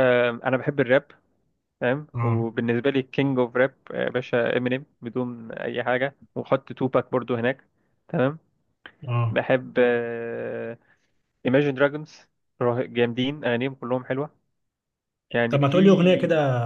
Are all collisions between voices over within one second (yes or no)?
yes